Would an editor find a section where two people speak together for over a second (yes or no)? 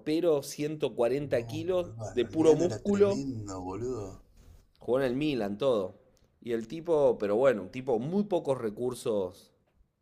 yes